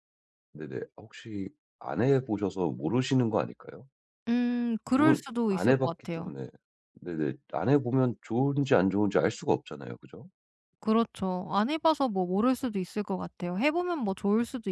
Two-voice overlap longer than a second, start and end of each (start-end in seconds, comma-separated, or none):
4.9-6.3